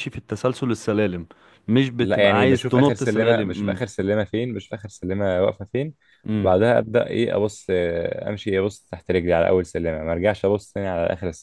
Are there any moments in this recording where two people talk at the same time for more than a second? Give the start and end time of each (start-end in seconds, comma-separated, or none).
2.0-3.8